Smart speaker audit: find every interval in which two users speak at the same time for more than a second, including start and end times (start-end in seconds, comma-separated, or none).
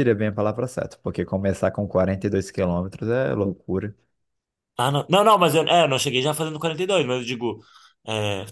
none